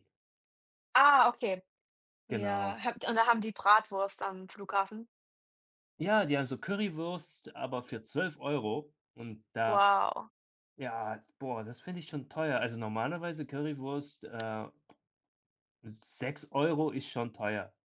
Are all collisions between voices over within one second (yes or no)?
yes